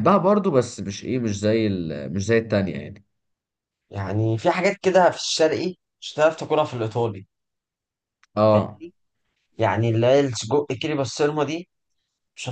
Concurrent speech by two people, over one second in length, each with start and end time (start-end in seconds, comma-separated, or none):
none